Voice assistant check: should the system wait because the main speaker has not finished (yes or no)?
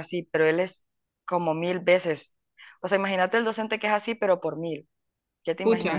no